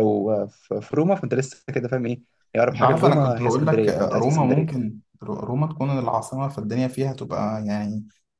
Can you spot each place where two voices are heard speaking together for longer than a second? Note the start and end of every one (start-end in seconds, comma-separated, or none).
2.7-4.9